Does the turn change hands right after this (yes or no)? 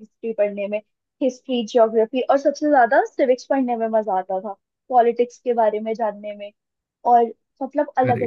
no